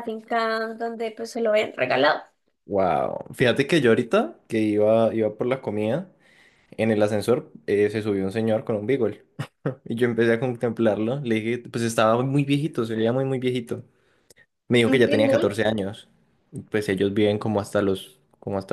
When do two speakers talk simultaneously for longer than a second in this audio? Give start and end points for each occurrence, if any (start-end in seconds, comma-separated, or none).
none